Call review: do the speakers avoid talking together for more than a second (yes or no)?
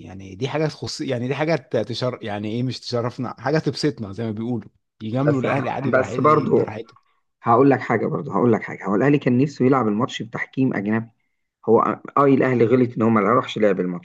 no